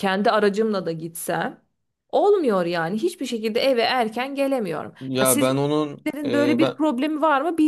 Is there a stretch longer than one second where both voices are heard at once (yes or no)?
yes